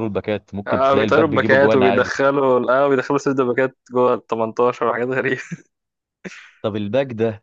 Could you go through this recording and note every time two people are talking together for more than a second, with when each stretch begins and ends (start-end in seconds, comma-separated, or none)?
0.7-2.1